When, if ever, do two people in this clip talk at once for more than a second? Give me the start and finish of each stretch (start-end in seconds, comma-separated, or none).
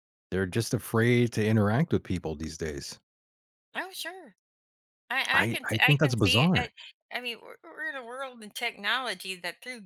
5.3-6.7